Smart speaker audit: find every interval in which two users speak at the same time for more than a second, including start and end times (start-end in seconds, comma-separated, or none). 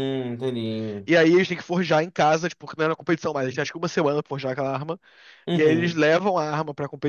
none